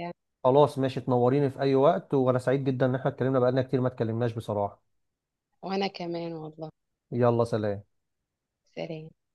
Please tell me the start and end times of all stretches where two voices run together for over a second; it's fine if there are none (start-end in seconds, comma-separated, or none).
none